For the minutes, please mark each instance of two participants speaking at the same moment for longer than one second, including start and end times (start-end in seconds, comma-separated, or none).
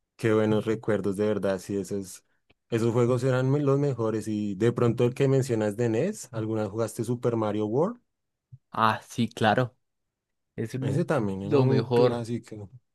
10.8-12.3